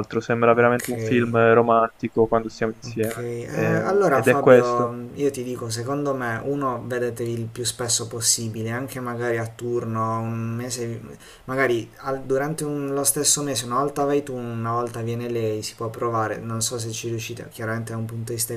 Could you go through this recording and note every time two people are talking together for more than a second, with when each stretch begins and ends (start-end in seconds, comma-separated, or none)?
2.8-4.9